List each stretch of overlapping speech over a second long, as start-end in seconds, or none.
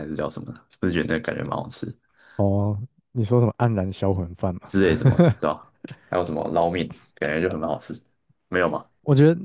none